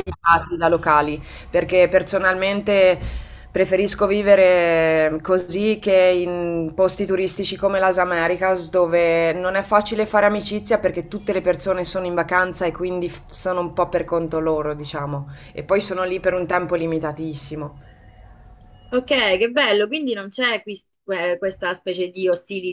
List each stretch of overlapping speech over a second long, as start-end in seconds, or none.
none